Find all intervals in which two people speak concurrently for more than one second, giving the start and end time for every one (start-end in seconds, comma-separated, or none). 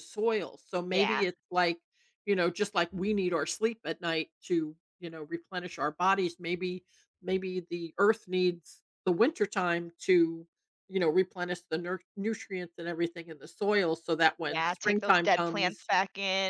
14.5-15.9